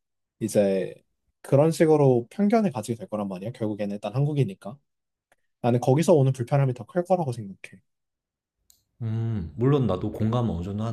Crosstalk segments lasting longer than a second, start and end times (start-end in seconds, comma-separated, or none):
none